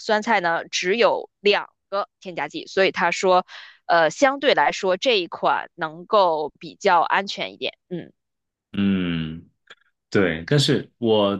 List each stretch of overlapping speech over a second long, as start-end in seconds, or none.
none